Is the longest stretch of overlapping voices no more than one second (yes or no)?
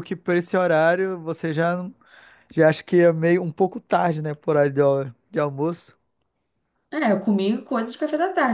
yes